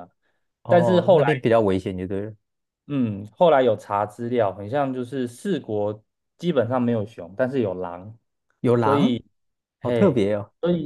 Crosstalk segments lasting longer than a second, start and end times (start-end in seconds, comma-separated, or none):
none